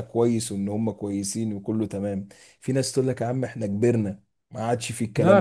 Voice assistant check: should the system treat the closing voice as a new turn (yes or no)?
yes